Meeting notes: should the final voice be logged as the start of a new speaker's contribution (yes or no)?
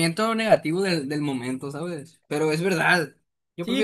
yes